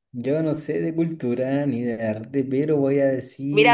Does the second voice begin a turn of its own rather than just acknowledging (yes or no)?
yes